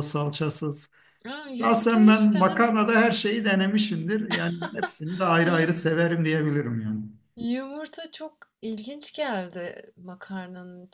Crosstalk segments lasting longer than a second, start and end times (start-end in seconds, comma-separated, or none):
1.6-3.0